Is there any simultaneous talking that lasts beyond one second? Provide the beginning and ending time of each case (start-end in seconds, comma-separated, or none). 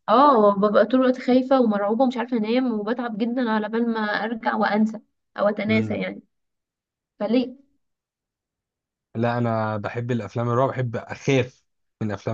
none